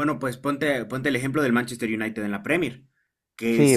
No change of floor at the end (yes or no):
no